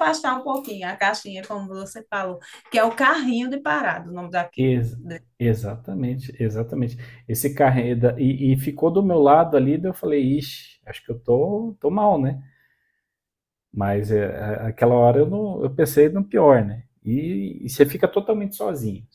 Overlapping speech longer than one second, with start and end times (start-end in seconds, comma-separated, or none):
none